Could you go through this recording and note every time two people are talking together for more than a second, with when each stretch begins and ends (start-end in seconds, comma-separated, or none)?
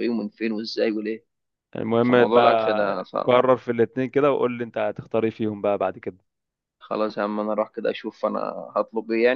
2.1-3.3